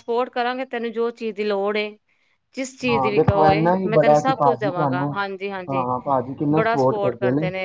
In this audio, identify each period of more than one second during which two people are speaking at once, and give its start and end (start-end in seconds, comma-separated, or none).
2.9-5.1